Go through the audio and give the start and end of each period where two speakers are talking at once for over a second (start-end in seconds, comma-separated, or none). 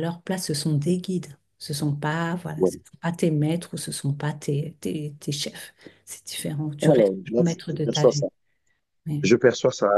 6.8-8.2